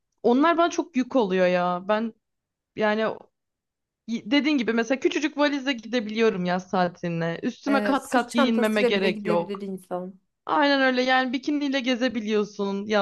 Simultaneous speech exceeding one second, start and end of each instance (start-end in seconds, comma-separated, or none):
7.7-9.6